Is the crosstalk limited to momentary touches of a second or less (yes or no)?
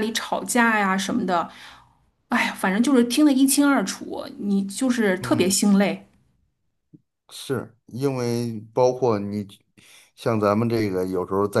yes